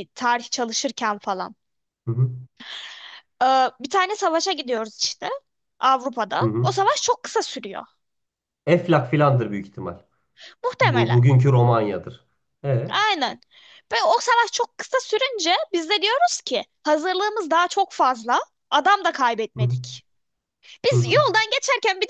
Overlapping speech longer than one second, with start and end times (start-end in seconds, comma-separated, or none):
none